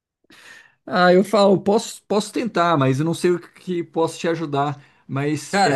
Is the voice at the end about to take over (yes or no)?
yes